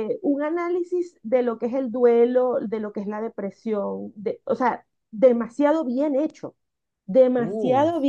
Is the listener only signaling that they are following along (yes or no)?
yes